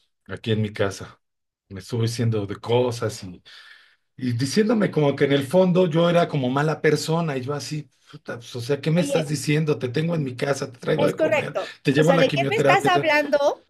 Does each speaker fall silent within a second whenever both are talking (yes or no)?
no